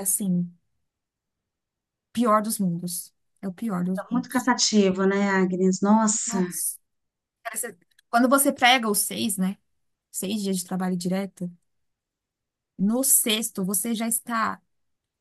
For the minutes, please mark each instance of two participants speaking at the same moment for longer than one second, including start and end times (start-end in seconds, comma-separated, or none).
none